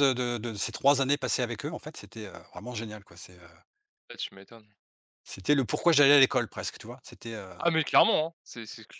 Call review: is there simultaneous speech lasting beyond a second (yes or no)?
no